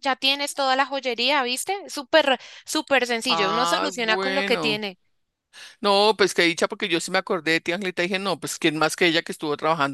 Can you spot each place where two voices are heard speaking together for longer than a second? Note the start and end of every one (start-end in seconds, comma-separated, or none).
3.3-4.8